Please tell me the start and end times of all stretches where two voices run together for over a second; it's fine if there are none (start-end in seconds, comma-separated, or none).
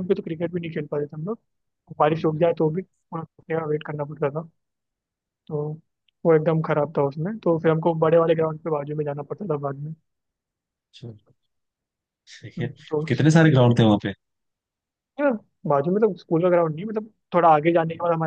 none